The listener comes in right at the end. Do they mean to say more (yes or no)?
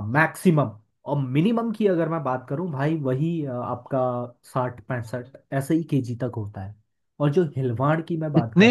yes